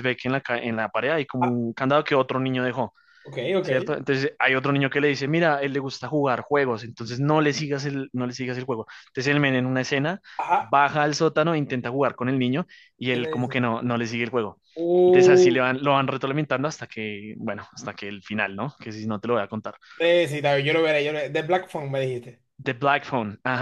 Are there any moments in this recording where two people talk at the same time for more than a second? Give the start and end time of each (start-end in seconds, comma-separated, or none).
none